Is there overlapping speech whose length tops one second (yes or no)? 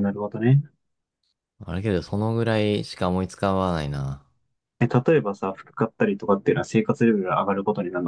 no